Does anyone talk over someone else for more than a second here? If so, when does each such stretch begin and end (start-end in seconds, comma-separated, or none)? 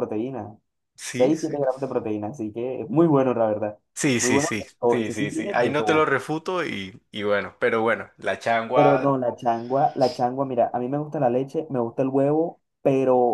4.2-6.0